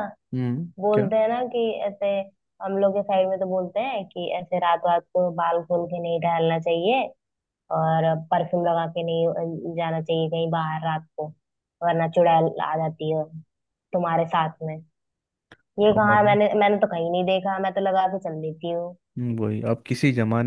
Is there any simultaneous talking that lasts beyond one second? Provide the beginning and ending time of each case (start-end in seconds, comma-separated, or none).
none